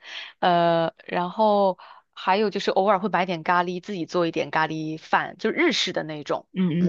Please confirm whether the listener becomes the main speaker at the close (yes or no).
yes